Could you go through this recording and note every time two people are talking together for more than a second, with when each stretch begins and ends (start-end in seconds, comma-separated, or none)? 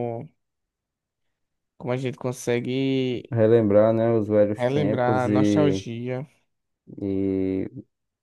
4.5-5.8